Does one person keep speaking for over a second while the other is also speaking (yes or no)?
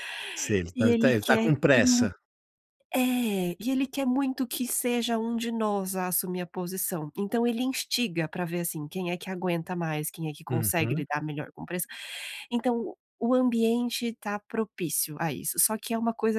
yes